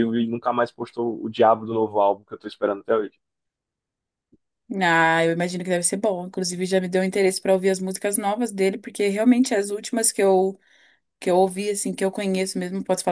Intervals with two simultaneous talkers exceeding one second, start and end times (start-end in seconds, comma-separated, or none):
none